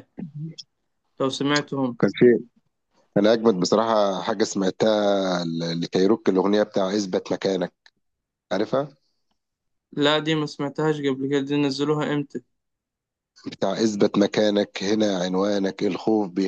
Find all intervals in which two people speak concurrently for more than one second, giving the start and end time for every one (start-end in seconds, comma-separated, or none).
none